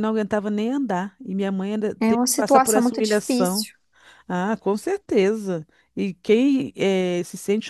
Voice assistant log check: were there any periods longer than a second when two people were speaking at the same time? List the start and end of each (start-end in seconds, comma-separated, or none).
2.0-3.7